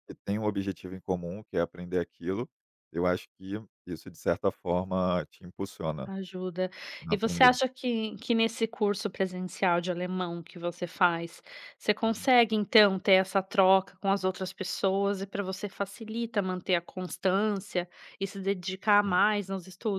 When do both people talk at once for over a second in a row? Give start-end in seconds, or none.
none